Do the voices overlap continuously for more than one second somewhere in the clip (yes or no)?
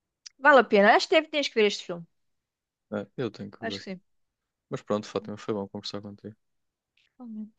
no